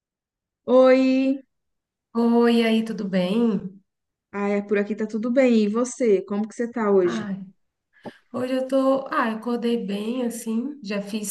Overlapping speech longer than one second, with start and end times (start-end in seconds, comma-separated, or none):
none